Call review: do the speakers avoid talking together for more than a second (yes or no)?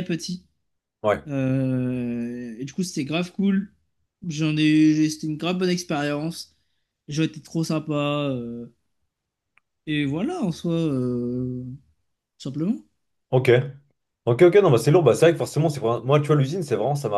yes